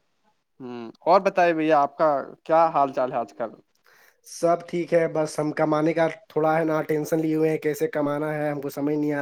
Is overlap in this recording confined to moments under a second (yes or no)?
yes